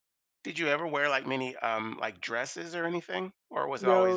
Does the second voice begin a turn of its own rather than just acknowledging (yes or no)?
yes